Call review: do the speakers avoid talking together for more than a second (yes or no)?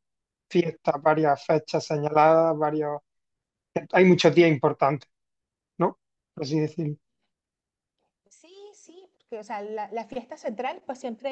yes